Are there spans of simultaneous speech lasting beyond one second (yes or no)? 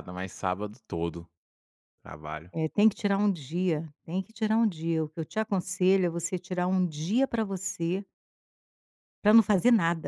no